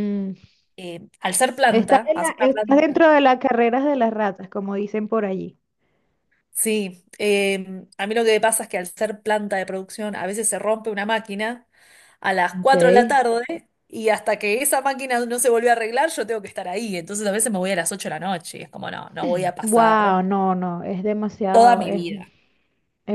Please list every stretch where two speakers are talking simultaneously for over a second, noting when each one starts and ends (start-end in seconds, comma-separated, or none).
1.7-3.0